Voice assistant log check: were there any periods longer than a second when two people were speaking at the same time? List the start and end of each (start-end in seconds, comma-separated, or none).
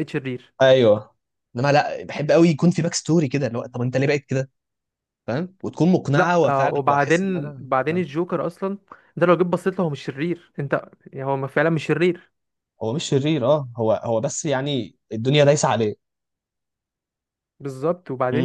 6.1-8.1